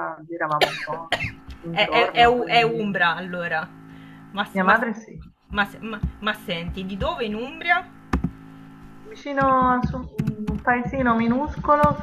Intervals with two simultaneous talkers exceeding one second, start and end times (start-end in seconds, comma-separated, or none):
1.7-2.9